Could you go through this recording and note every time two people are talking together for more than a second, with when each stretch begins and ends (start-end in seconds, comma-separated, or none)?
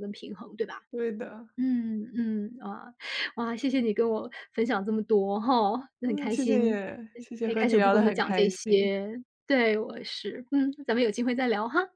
6.1-8.9